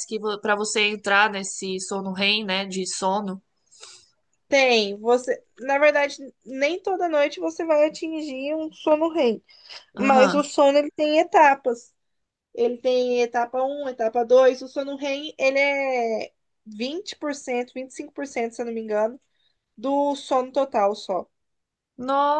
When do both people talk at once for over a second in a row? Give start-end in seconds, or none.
none